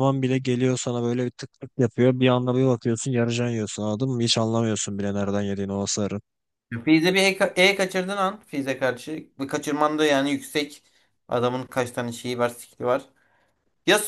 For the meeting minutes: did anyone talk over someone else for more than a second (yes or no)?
no